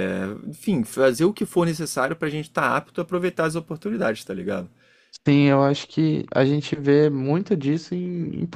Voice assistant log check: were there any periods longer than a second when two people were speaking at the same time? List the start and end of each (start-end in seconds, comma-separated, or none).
none